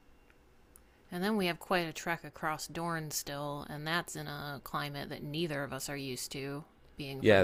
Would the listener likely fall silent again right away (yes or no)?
no